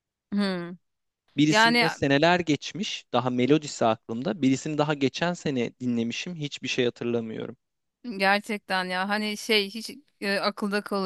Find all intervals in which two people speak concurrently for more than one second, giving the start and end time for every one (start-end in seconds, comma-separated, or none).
none